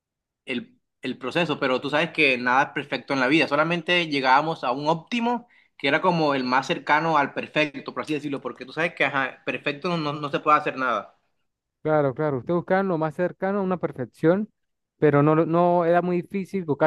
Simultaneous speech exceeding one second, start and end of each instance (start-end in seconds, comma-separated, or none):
none